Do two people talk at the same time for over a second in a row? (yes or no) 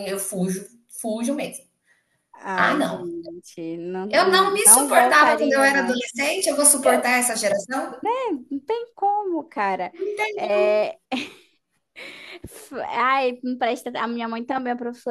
yes